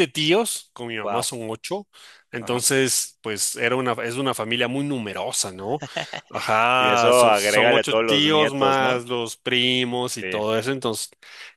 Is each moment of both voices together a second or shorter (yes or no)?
no